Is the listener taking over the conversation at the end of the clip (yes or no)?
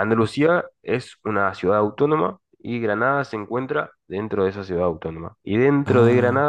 no